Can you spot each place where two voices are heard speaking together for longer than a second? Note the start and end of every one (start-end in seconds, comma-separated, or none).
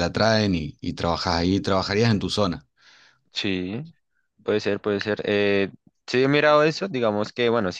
none